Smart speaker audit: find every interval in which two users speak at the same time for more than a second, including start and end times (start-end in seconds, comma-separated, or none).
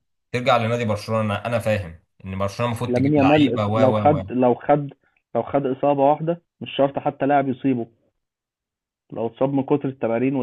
2.9-4.3